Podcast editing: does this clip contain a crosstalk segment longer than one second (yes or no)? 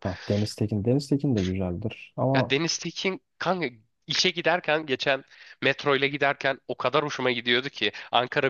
no